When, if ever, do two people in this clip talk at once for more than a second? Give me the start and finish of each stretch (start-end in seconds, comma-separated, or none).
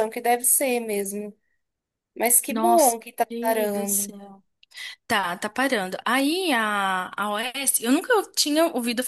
2.5-4.1